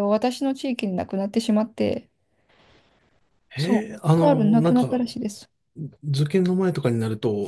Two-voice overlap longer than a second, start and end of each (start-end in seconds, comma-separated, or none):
3.6-5.0